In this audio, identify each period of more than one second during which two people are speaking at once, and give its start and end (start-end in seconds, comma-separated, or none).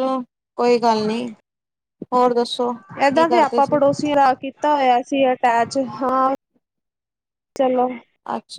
none